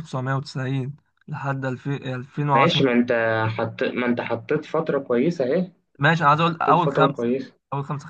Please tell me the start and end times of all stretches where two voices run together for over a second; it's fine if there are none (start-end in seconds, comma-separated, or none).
6.0-7.3